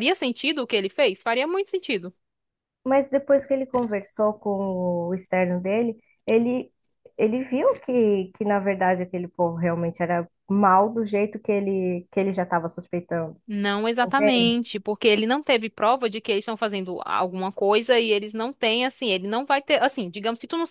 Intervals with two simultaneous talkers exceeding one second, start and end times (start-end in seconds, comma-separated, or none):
none